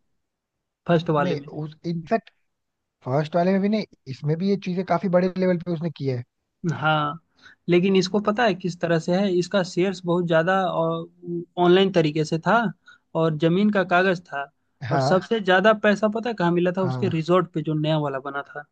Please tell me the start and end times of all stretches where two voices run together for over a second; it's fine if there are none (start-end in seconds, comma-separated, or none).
none